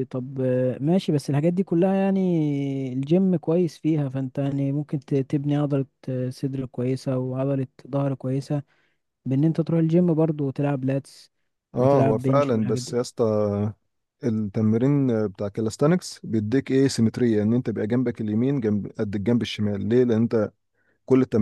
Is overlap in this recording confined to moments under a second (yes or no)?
no